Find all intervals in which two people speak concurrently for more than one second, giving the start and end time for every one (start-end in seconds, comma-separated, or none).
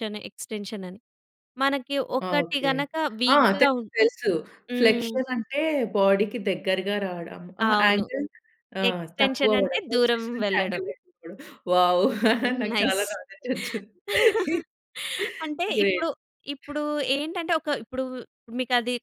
8.9-10.8